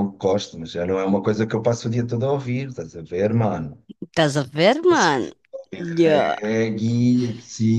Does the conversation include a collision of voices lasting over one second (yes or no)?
no